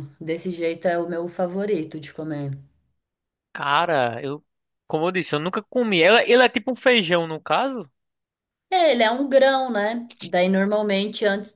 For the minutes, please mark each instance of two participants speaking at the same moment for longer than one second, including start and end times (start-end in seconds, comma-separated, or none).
none